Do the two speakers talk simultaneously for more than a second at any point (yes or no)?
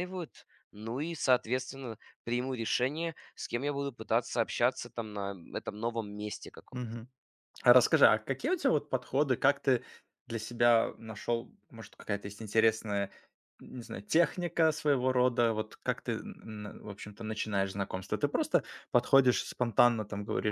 no